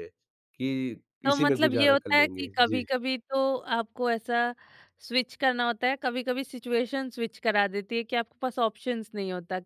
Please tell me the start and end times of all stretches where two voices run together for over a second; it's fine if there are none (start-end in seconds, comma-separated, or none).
1.2-2.9